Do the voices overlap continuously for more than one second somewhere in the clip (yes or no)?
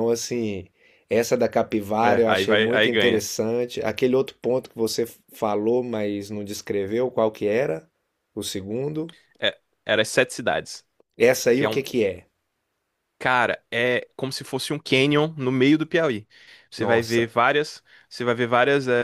yes